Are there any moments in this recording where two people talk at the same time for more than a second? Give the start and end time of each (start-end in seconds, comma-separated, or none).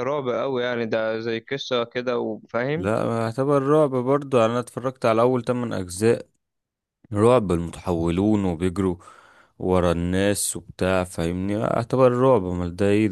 none